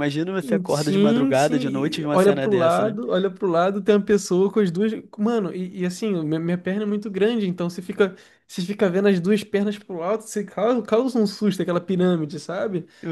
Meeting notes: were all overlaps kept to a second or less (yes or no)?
no